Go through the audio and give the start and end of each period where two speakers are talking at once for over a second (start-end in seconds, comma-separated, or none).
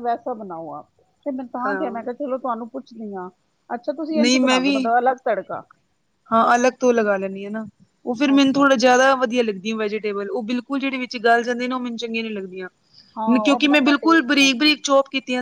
13.4-14.7